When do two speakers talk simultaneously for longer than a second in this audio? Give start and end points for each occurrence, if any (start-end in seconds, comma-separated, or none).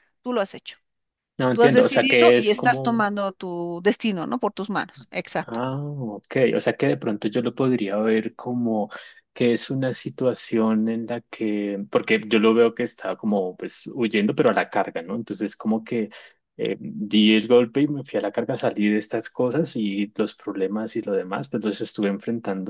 1.5-3.0